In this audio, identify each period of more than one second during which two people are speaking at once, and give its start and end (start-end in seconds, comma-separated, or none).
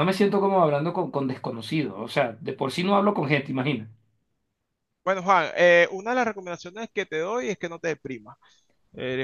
none